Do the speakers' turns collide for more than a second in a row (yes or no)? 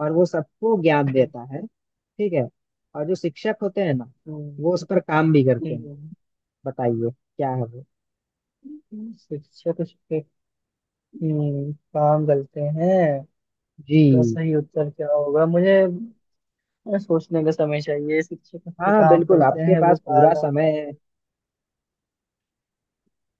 yes